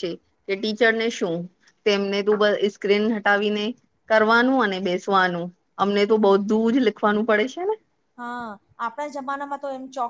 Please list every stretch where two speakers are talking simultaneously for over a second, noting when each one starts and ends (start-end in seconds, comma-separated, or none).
none